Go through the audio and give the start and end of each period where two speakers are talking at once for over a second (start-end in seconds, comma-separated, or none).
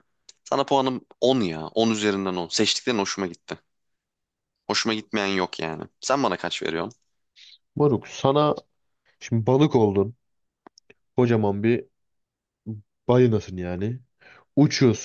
none